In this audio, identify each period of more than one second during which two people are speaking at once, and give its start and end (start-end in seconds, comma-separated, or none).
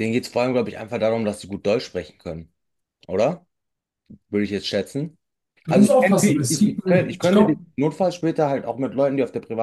5.7-7.6